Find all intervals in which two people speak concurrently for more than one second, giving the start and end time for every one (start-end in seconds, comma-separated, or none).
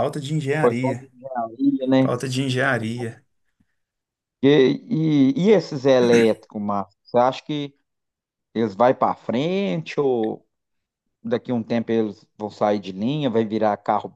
none